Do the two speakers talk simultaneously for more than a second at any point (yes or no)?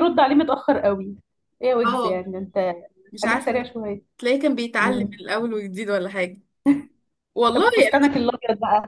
no